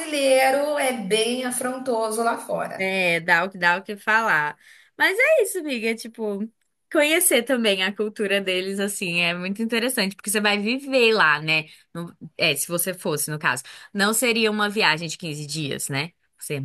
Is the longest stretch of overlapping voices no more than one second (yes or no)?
yes